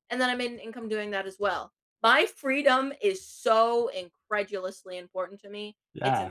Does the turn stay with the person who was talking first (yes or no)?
no